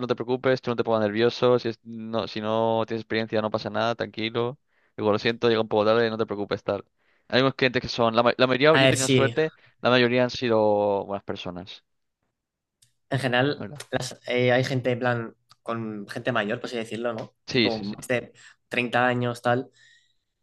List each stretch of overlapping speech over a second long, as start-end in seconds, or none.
none